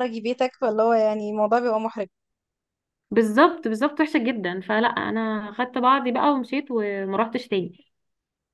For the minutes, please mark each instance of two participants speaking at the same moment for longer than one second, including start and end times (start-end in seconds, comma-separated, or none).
none